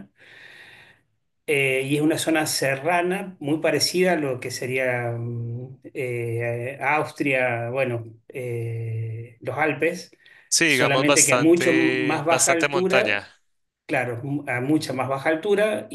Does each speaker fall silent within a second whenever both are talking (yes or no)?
no